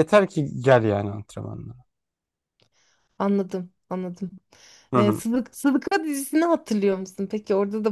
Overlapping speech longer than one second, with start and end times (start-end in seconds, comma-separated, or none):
none